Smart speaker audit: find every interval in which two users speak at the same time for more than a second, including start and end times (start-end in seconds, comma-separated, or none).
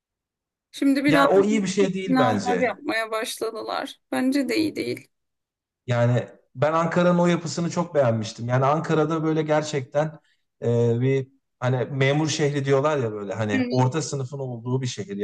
1.1-2.8